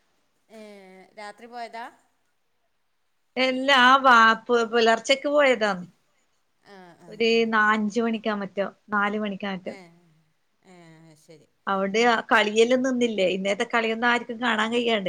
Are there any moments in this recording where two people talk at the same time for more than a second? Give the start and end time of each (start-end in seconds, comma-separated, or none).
none